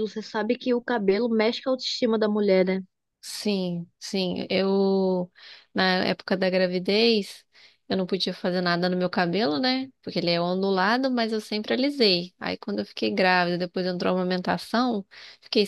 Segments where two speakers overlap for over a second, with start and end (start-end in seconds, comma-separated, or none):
none